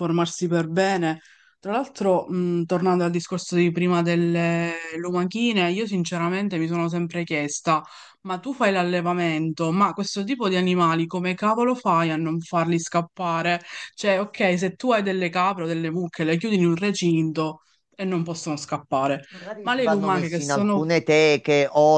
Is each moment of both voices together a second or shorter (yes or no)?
no